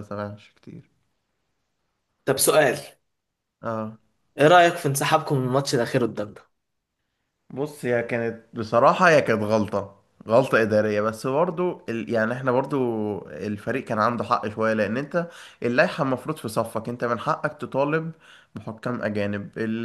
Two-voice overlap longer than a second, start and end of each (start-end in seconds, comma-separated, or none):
none